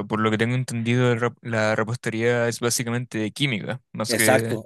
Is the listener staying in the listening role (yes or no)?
no